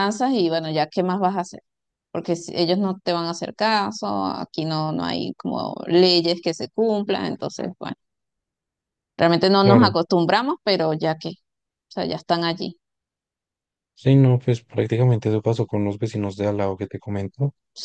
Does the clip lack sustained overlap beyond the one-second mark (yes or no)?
yes